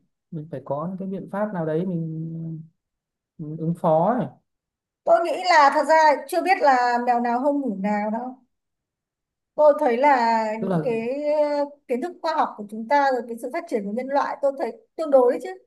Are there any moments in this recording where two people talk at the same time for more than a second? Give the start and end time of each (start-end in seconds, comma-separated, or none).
none